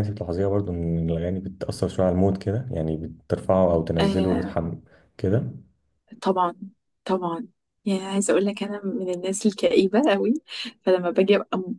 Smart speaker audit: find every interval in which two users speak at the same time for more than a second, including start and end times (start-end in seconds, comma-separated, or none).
none